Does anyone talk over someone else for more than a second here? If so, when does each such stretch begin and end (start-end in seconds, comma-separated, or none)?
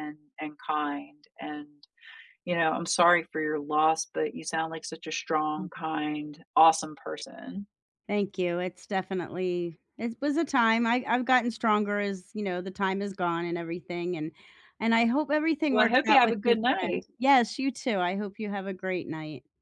15.7-17.1